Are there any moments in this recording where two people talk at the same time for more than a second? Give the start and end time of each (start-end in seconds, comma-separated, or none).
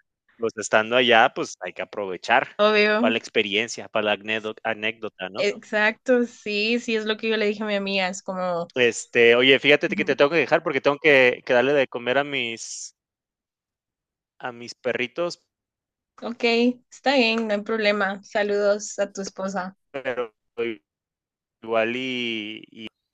none